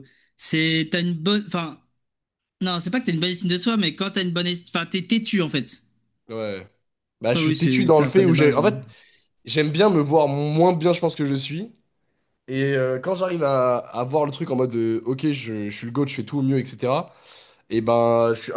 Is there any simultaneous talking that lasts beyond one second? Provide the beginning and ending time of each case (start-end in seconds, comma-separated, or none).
7.3-8.7